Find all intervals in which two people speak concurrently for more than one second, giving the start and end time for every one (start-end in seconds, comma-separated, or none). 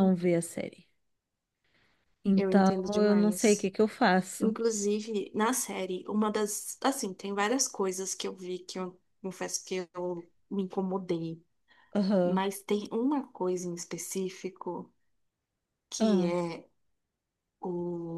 2.4-3.7